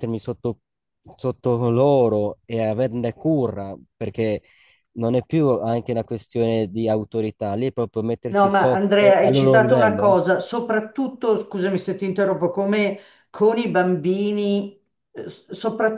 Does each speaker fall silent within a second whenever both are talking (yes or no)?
no